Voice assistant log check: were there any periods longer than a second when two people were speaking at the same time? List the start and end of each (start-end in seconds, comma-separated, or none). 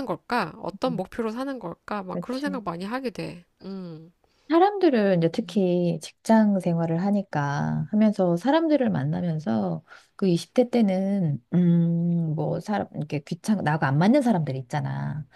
none